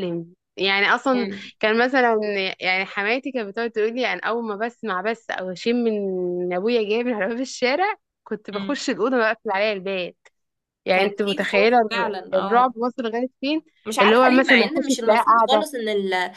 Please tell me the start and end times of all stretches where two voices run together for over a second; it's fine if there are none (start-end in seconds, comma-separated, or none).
10.9-12.7, 14.0-15.7